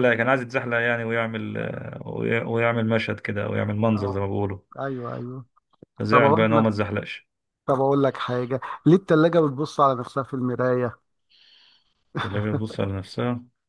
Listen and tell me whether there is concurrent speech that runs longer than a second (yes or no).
no